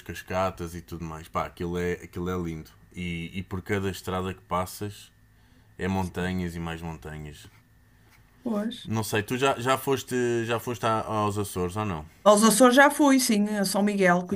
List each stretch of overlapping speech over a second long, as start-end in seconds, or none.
none